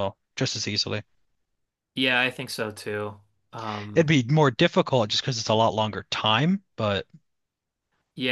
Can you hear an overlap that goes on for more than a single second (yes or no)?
no